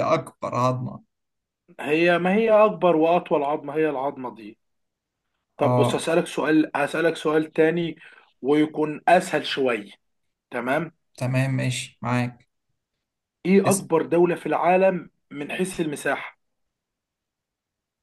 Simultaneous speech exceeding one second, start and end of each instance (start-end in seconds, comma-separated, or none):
none